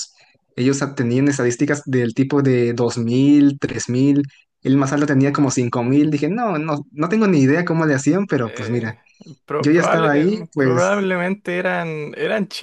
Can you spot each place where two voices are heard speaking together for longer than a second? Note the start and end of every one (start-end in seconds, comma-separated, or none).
9.6-11.1